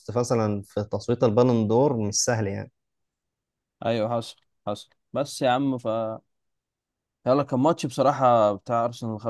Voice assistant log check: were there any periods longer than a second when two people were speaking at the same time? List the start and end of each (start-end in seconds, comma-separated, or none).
none